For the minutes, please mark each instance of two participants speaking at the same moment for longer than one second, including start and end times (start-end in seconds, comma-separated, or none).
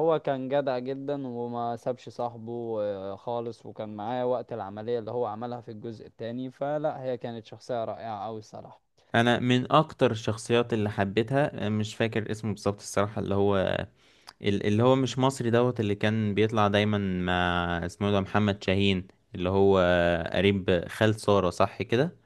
none